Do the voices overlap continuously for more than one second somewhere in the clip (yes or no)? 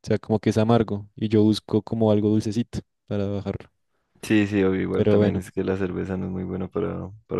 no